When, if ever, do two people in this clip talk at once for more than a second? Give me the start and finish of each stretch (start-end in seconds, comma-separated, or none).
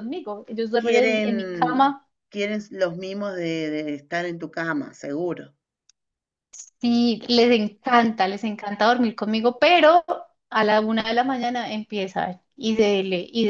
0.8-2.1